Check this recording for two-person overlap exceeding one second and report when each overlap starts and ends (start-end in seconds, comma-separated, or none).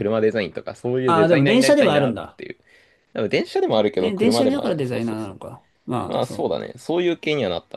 1.1-2.4, 4.0-5.3